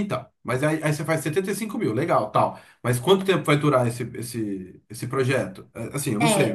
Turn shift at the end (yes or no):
yes